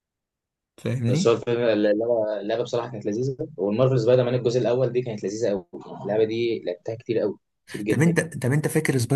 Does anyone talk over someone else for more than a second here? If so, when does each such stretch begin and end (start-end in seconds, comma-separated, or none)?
none